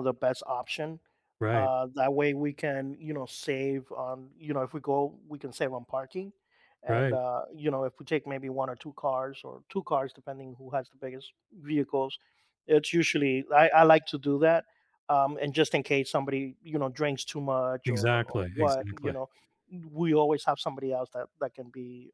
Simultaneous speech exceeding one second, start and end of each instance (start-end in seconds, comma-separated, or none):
17.9-19.2